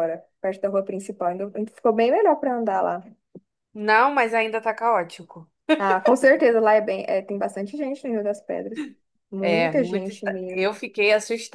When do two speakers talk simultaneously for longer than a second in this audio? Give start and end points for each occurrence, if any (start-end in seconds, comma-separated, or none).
9.4-10.6